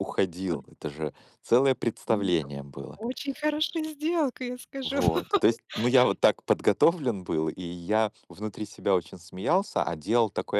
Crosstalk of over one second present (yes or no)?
no